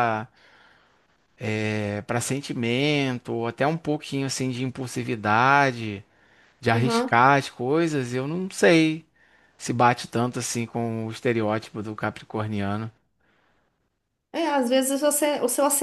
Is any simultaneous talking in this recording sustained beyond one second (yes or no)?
no